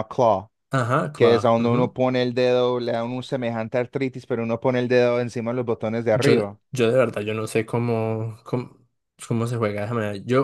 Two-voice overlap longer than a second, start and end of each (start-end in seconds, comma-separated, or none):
none